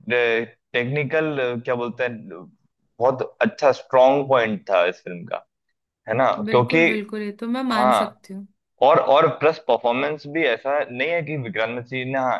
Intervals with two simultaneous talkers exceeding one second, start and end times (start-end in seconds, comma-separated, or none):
none